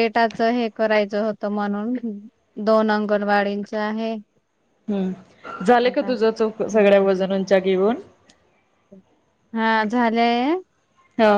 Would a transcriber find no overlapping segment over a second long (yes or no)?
no